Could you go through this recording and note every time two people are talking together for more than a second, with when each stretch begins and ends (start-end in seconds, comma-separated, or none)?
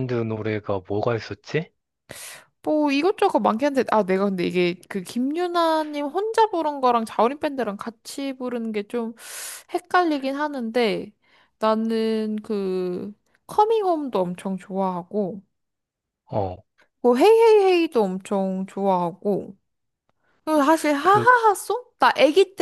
none